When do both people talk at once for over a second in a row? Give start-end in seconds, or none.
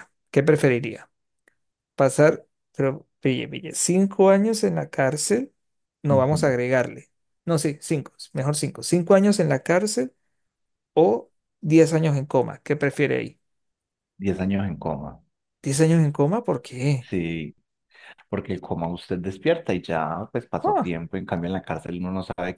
none